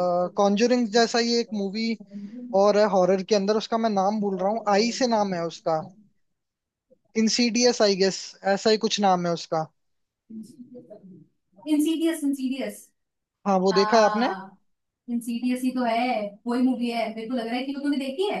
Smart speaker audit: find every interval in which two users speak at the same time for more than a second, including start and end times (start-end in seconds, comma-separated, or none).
none